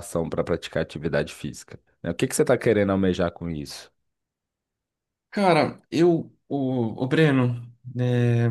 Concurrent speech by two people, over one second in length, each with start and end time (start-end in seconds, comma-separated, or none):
none